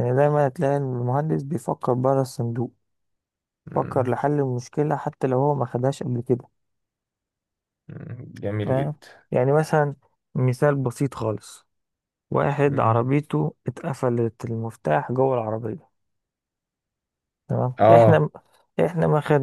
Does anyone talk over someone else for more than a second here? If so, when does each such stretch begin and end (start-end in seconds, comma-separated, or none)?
none